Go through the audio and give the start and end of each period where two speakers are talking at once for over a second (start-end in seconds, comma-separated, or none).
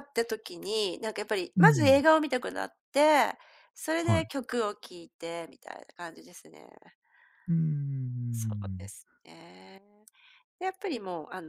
none